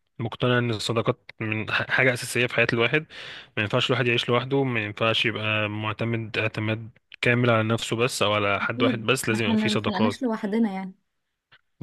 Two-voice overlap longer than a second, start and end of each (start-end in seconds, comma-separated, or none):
8.6-10.3